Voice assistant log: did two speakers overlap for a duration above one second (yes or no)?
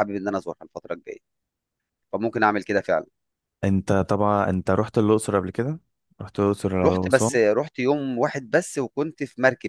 no